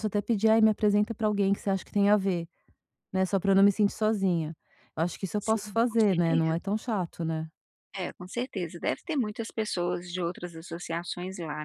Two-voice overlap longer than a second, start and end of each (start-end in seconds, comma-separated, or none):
5.4-6.6